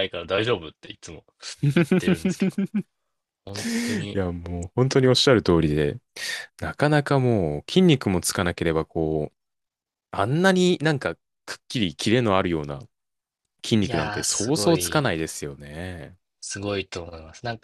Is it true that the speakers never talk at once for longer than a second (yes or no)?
no